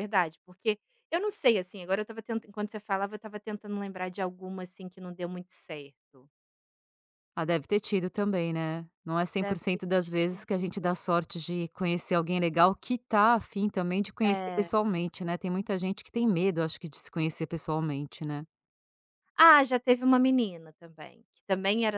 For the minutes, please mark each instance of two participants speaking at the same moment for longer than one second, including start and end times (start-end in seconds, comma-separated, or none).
9.4-11.0